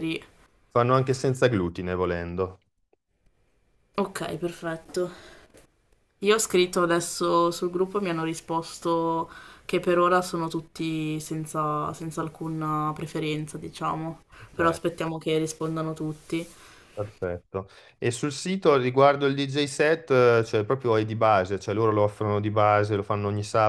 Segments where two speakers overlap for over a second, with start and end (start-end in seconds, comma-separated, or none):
none